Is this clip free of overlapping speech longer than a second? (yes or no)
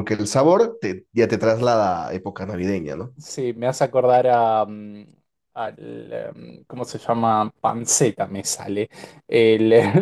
yes